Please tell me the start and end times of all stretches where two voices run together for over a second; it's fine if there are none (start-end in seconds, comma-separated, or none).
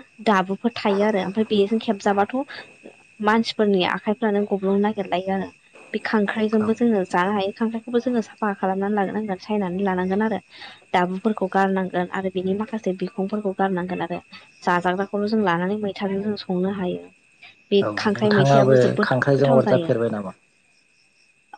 17.8-19.9